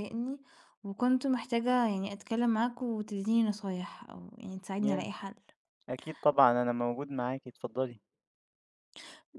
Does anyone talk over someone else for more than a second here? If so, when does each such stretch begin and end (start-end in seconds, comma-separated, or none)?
none